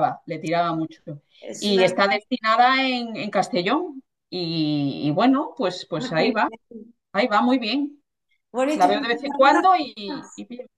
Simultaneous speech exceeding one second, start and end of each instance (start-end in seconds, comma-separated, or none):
8.7-10.2